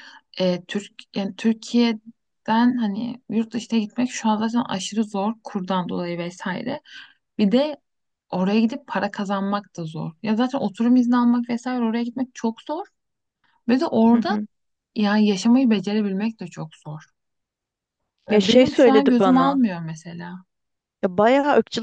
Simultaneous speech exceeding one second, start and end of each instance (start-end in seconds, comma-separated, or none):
18.3-19.6